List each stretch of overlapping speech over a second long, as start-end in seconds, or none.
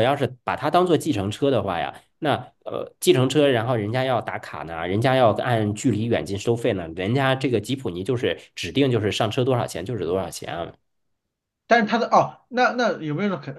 none